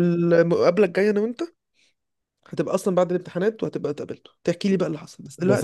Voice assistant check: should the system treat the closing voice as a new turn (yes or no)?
yes